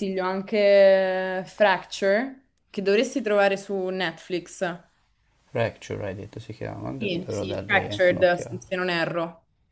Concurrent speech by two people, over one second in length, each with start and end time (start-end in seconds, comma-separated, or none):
7.0-8.6